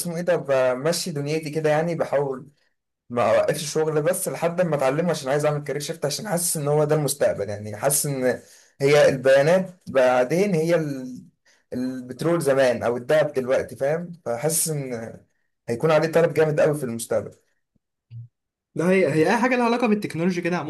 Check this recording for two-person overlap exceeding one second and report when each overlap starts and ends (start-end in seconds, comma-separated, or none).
none